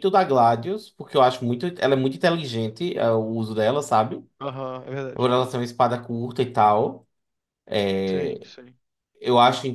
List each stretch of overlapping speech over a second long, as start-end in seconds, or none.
none